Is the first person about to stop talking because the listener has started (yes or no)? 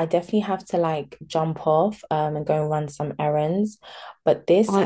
no